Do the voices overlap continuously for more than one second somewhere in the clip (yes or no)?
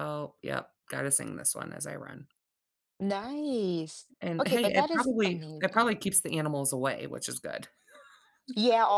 yes